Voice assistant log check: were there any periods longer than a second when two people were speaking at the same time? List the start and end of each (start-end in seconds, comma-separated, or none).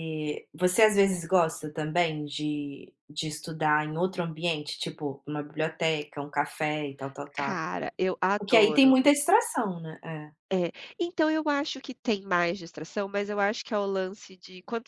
none